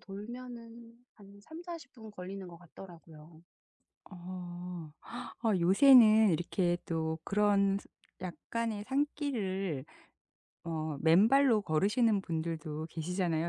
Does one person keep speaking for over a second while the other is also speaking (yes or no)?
no